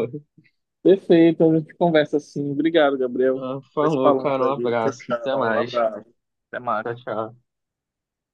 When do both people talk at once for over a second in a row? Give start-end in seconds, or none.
3.4-5.7